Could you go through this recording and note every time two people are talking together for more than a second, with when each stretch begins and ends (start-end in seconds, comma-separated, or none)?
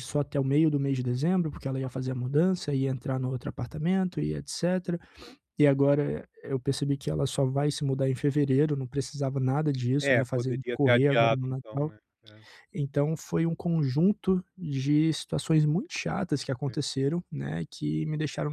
10.0-11.9